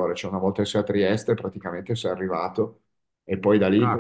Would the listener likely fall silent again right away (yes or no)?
no